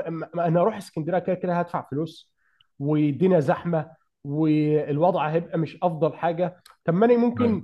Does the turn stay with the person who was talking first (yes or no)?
yes